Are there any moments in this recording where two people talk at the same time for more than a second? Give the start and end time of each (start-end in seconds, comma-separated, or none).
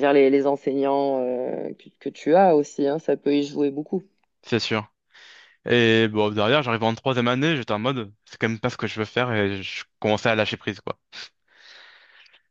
none